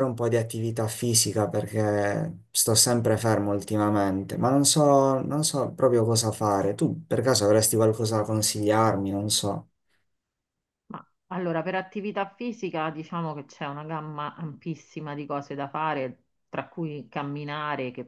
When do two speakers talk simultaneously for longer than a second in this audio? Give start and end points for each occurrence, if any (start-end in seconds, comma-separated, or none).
none